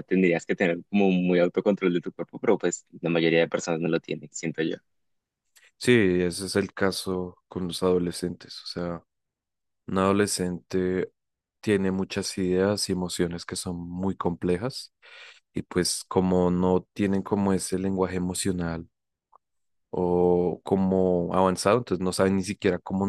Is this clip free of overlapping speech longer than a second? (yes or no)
yes